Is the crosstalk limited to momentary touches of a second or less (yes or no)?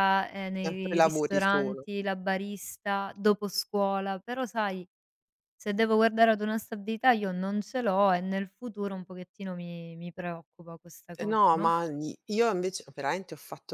no